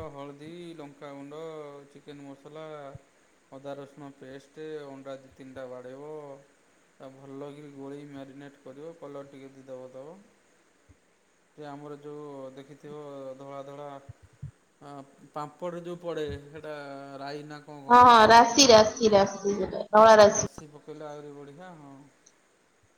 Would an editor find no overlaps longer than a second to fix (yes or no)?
yes